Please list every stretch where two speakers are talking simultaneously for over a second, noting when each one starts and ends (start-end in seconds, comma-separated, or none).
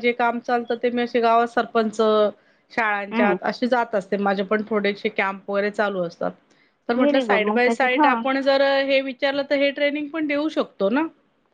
7.0-8.2